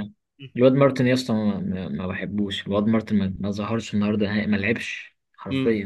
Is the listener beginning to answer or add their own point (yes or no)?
yes